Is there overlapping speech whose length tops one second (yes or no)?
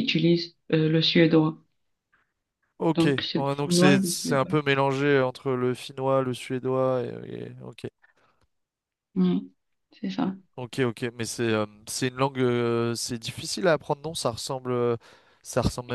yes